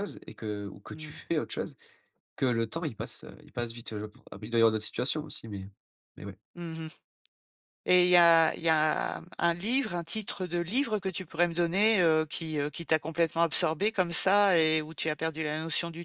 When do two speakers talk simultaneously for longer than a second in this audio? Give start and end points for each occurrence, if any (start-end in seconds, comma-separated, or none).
none